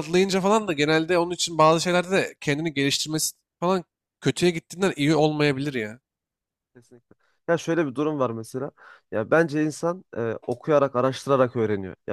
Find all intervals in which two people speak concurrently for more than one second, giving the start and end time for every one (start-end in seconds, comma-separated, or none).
none